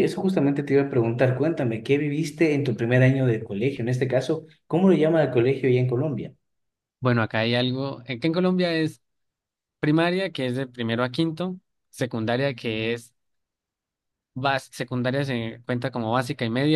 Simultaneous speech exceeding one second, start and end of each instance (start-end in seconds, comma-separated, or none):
none